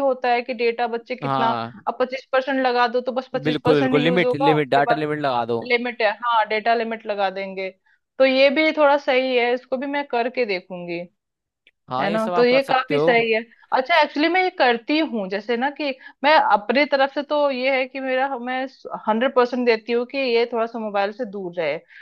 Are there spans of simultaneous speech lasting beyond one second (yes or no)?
yes